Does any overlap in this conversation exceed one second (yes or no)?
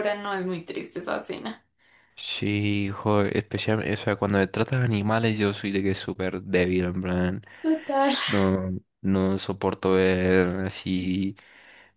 no